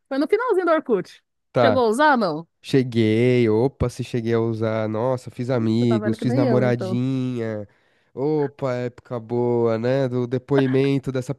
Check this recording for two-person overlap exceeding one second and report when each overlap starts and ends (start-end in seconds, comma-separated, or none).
5.5-7.0